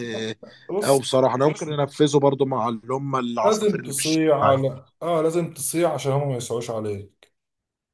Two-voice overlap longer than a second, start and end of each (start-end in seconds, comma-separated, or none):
3.4-4.6